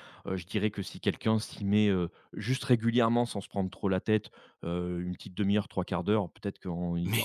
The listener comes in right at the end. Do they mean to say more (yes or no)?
no